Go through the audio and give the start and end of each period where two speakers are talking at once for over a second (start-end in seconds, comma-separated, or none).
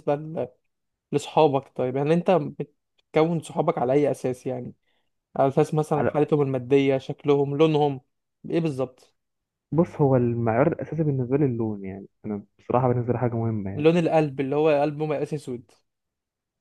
none